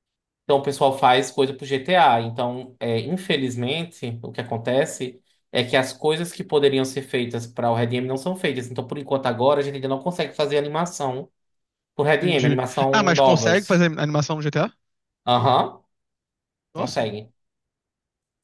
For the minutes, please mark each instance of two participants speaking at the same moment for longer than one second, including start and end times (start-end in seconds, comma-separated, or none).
12.2-13.8